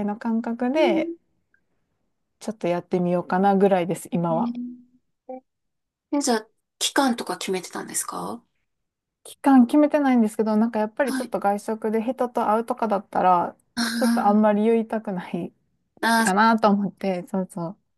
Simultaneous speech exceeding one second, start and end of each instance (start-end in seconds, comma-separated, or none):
none